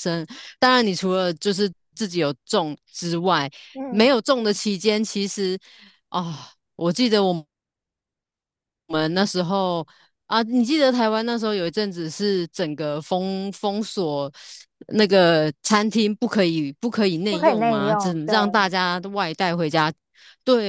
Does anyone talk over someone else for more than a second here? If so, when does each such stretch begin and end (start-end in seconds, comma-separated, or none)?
17.3-18.6